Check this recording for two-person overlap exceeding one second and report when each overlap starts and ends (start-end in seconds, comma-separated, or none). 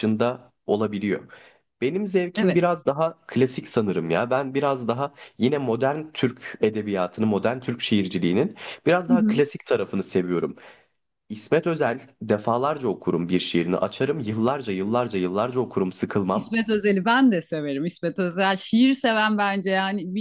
none